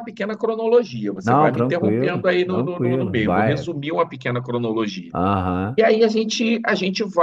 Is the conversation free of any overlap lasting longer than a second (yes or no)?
no